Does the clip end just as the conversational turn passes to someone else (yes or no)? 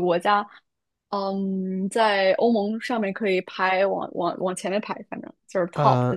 yes